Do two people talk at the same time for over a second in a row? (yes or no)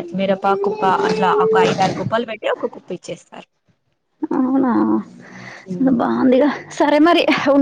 no